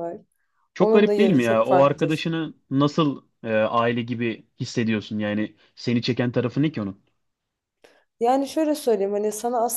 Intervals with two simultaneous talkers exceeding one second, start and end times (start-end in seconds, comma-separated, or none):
0.8-2.3